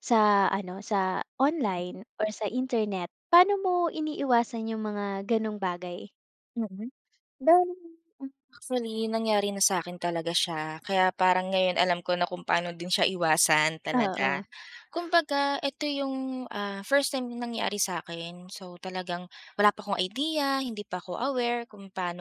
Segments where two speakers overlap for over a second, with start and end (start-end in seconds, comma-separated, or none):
none